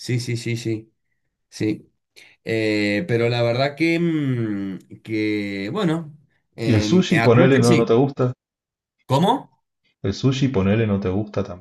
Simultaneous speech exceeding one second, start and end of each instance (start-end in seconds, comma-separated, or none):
6.7-7.9